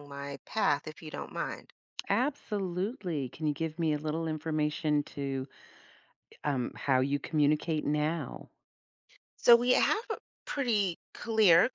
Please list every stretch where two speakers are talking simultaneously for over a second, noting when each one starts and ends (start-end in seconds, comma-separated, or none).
none